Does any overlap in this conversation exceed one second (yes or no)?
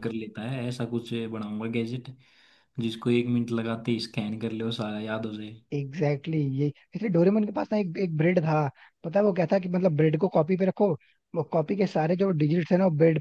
no